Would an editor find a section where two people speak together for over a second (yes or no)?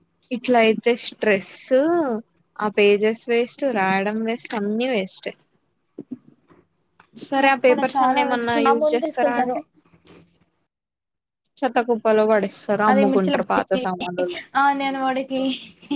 yes